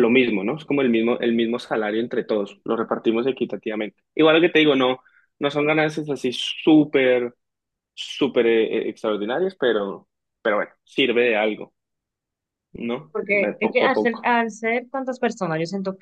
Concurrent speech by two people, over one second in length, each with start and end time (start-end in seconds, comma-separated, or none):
13.1-14.3